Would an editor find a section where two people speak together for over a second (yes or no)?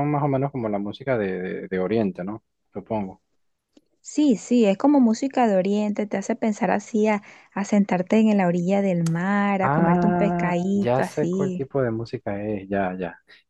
yes